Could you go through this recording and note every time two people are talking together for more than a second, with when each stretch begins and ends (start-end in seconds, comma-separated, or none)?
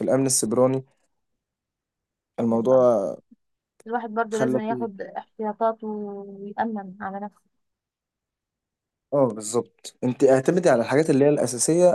none